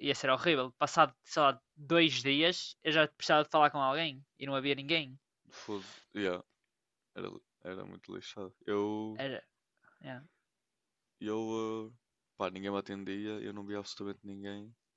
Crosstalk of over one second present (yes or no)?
no